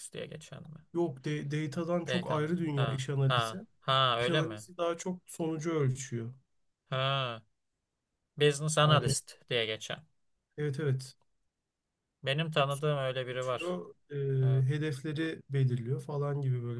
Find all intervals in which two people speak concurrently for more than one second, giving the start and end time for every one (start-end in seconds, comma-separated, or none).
2.1-3.6